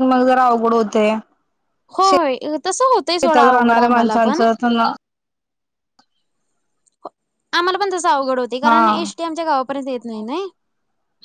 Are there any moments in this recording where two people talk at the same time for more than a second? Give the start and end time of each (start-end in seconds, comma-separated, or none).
3.1-4.4